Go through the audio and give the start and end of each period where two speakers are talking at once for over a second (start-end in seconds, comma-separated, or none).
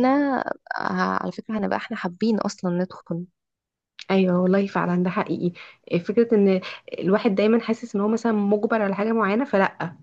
none